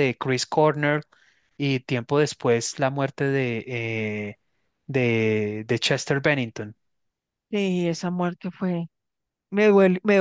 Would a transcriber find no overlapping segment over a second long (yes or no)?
yes